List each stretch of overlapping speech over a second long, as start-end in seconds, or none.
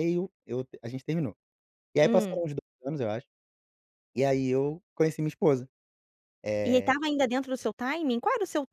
none